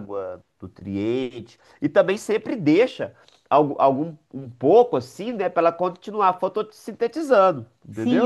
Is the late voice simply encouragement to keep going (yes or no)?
no